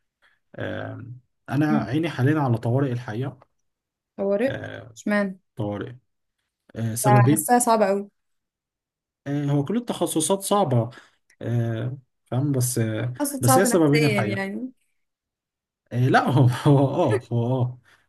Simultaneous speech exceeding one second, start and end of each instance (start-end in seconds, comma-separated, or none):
13.2-14.5